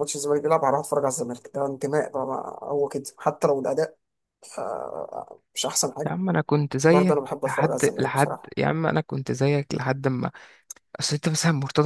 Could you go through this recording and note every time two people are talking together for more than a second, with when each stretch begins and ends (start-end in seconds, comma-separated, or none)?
6.9-8.5